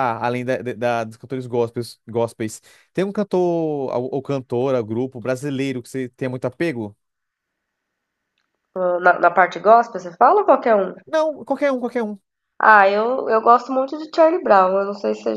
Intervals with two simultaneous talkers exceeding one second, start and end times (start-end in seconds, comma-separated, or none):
none